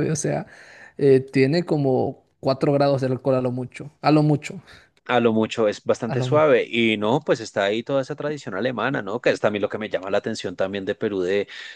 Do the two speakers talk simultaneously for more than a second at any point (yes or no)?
no